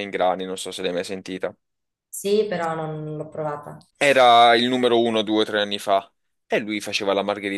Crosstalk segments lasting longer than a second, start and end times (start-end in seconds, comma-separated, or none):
none